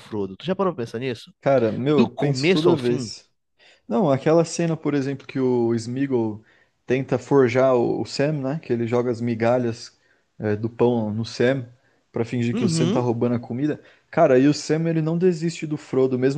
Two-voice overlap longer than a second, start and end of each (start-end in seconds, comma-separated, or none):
1.9-3.1